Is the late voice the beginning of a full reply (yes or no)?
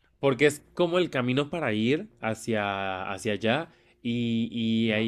no